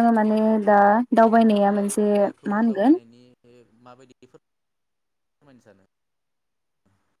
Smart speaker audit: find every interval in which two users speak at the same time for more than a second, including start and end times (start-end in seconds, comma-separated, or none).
1.3-3.0